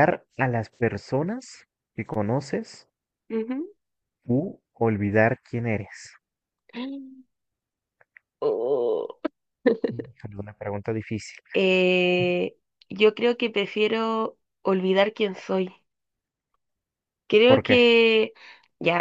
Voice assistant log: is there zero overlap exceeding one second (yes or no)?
yes